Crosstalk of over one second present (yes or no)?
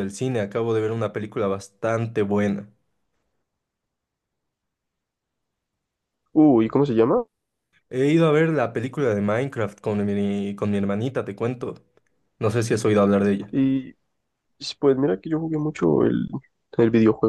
no